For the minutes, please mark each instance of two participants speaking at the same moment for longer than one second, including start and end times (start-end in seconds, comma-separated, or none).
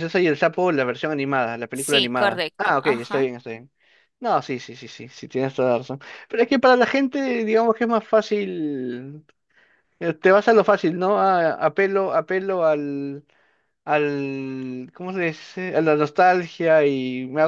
1.7-3.3